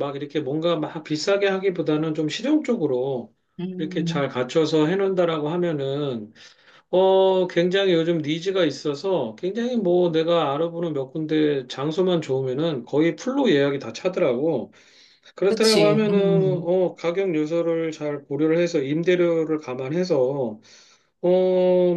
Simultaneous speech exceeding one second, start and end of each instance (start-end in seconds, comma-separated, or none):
15.4-16.7